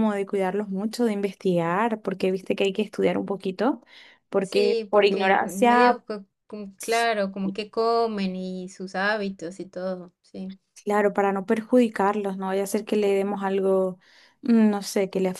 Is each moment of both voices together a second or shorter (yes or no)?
no